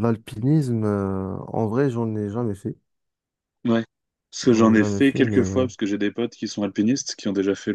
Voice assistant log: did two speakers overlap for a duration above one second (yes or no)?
yes